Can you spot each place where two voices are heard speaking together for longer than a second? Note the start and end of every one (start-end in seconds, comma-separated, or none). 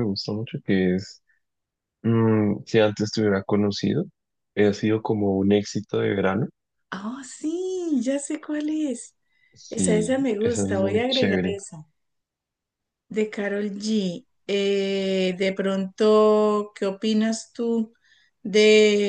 9.7-11.6